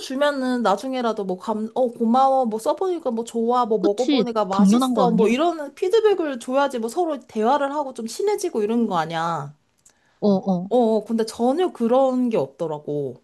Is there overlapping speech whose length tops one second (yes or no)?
yes